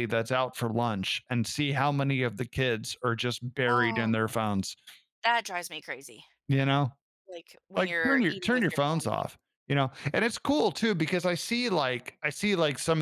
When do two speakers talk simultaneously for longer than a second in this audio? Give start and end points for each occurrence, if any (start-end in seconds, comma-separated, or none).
7.8-9.2